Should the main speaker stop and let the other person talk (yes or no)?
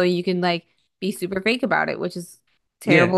yes